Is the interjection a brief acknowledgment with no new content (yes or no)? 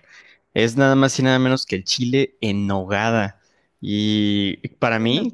yes